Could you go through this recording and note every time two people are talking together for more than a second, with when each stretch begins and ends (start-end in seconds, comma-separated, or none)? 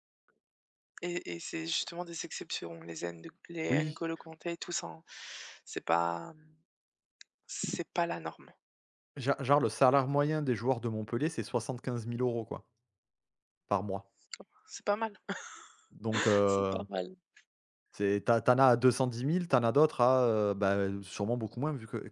none